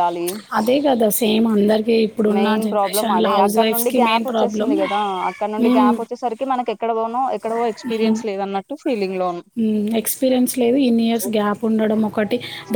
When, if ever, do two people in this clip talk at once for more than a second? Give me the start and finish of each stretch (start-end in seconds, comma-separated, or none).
2.4-4.7